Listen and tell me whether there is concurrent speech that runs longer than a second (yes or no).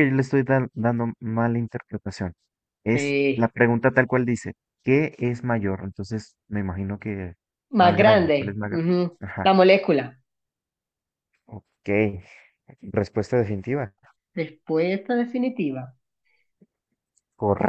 yes